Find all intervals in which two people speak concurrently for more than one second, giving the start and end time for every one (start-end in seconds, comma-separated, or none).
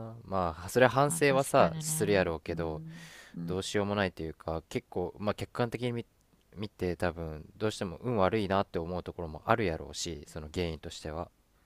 1.1-2.8